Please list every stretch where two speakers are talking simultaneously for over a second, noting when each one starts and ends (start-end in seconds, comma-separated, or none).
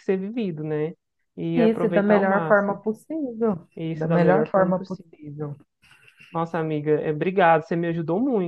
1.5-2.8, 3.7-5.1